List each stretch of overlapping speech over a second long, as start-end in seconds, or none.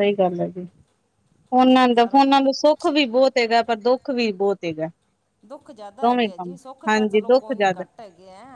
6.0-7.8